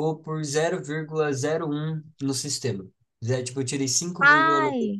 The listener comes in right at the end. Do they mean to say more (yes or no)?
no